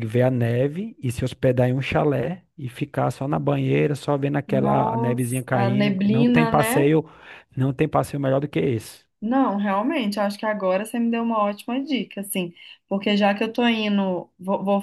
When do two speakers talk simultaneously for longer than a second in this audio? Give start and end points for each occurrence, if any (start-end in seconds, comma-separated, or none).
4.5-6.9